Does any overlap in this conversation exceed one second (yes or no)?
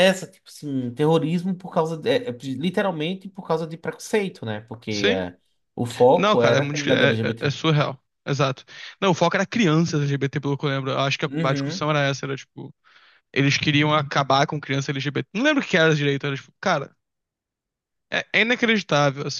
yes